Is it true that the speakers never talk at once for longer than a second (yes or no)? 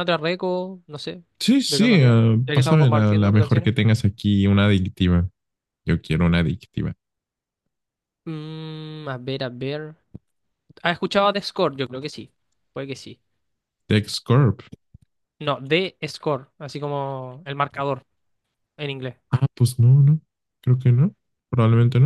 no